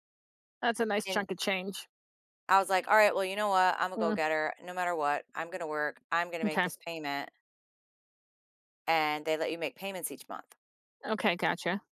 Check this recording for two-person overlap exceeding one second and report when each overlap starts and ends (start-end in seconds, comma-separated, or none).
none